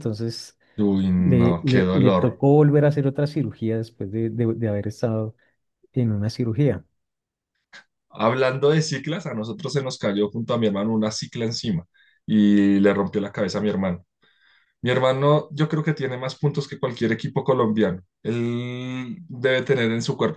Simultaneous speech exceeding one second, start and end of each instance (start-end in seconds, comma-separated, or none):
1.2-2.4